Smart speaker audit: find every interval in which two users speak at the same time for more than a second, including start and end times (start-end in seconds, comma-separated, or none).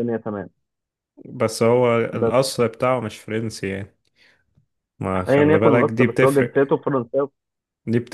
5.3-6.5